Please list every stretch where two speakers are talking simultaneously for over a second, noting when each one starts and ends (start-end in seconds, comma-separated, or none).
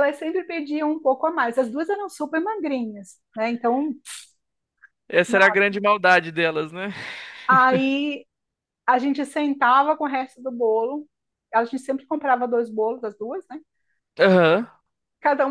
none